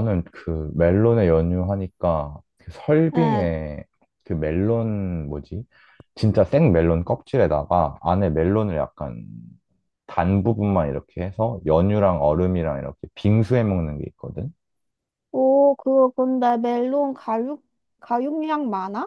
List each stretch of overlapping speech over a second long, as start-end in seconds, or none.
none